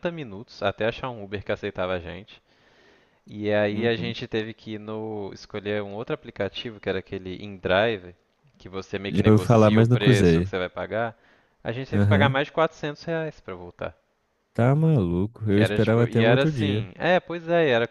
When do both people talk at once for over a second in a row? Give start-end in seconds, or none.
9.1-10.5, 15.5-16.9